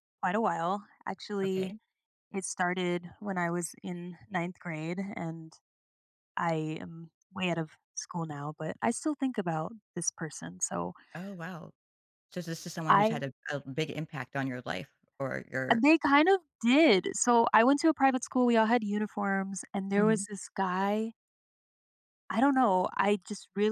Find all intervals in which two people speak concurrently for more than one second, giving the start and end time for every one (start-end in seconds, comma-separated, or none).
none